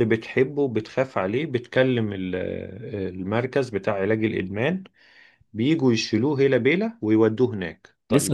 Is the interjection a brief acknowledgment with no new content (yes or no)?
no